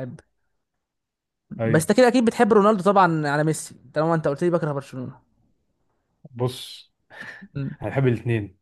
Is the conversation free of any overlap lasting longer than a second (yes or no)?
yes